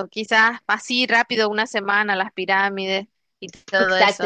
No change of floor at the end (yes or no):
no